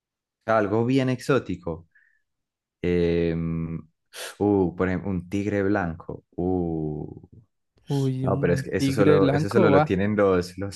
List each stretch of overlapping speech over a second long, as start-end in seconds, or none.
8.2-10.0